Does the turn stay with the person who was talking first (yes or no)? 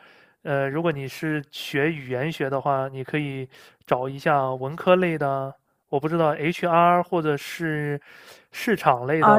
no